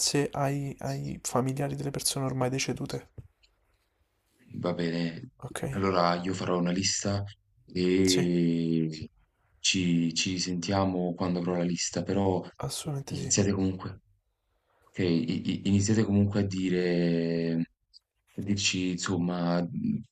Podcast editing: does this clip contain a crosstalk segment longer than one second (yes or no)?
no